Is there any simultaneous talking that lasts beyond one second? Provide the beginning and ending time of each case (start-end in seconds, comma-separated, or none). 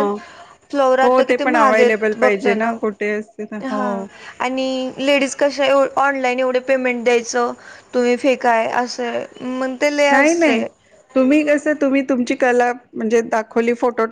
1.0-2.8